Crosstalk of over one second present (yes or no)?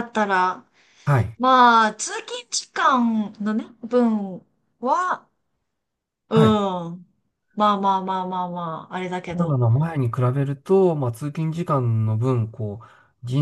no